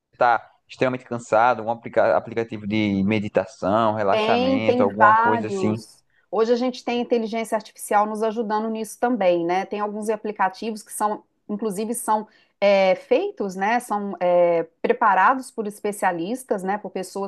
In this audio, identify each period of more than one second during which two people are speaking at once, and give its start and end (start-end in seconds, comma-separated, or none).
4.1-5.8